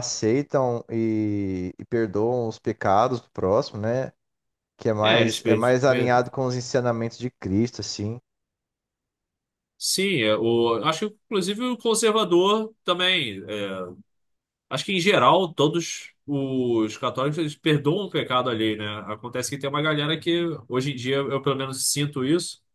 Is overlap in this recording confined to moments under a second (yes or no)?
no